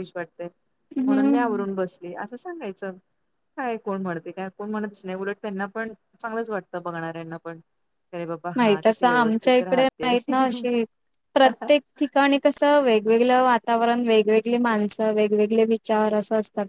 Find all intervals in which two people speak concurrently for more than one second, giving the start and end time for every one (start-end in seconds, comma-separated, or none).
8.6-10.1